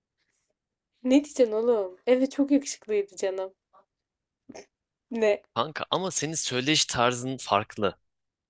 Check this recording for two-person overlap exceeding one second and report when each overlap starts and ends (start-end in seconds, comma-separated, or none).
none